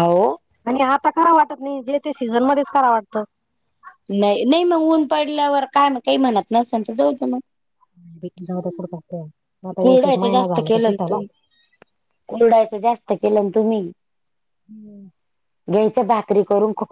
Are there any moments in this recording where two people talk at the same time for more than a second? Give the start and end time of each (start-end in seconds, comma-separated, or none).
none